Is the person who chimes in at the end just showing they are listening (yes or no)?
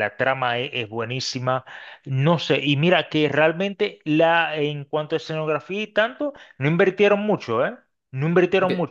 yes